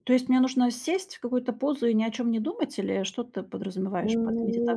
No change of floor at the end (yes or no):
no